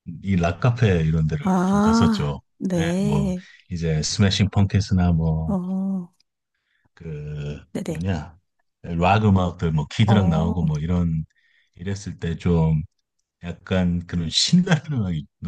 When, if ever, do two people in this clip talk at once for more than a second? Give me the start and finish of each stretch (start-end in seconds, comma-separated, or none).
1.4-3.3